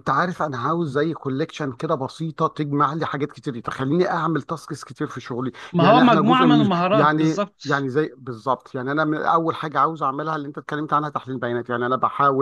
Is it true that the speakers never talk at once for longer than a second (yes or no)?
no